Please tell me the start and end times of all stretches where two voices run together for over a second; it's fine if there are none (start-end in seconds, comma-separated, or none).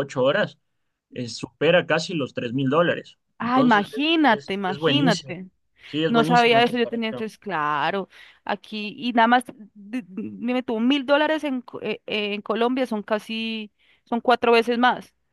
3.4-5.3, 6.1-7.3